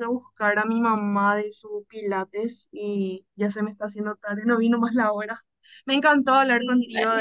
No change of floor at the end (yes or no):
yes